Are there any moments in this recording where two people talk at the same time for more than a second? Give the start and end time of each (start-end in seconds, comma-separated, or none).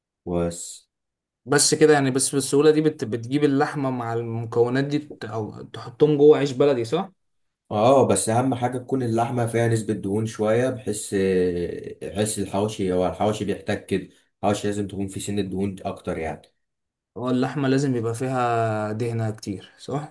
none